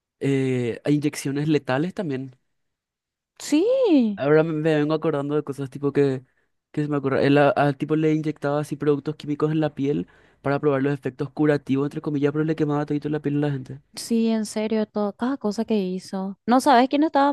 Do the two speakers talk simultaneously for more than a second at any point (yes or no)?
no